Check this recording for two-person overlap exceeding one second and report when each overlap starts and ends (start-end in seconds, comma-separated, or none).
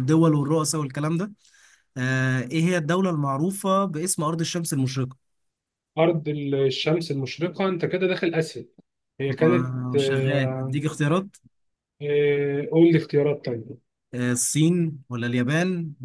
9.3-10.8